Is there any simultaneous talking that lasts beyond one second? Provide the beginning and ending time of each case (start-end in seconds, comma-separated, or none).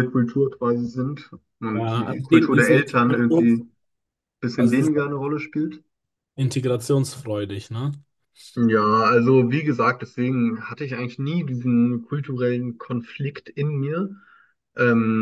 1.7-3.6